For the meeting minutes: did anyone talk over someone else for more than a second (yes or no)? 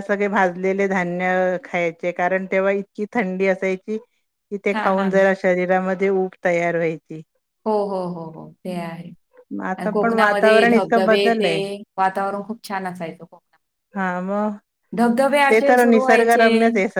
yes